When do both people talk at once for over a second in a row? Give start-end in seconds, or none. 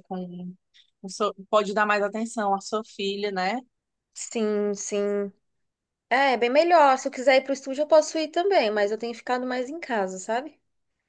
none